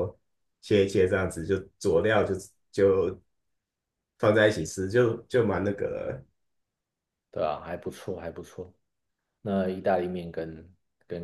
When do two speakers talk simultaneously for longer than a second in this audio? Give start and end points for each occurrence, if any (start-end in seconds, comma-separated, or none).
none